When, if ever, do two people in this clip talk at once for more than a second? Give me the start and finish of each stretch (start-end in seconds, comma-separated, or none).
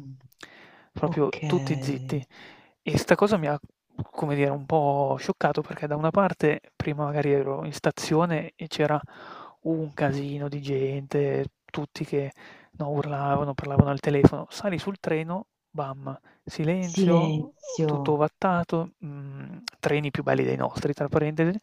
16.9-18.2